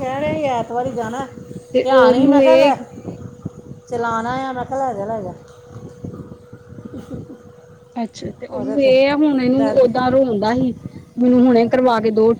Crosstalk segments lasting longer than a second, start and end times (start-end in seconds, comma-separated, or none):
8.5-9.9